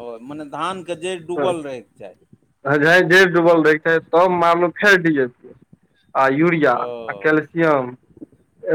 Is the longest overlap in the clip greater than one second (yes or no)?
no